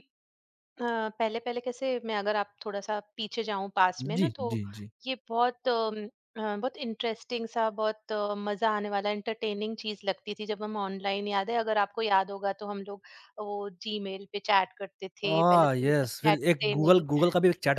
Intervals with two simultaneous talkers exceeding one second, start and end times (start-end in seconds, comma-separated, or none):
15.3-17.0